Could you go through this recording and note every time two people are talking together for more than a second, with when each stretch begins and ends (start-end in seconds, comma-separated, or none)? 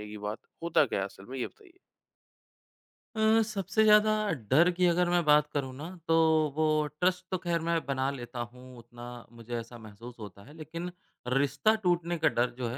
none